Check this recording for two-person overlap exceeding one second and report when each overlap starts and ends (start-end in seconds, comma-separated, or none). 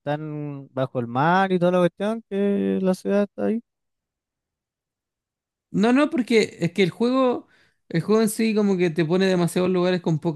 none